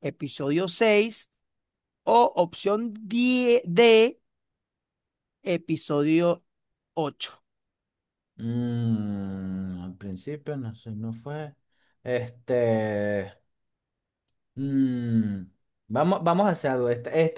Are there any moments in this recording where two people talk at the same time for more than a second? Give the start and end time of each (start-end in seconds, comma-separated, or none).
none